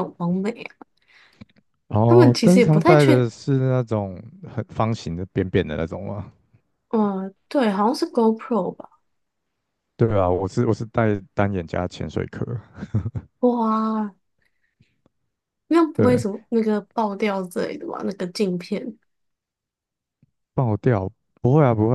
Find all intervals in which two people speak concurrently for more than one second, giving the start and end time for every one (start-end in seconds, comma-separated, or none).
2.1-3.3